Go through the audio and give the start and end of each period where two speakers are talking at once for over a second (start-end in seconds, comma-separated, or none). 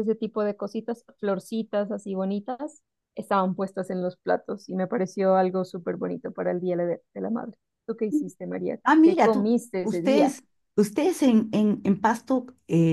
8.8-10.3